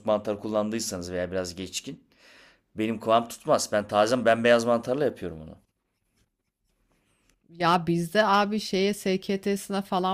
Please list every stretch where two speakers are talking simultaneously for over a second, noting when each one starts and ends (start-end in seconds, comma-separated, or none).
none